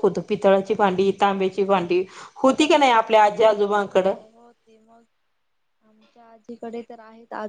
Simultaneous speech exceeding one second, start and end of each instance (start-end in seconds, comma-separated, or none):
none